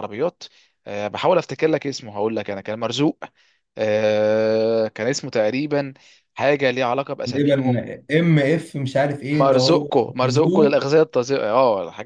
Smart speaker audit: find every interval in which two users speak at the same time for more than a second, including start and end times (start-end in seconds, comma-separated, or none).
9.3-10.7